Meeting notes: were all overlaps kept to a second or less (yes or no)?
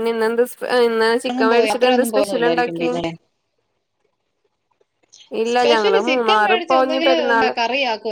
no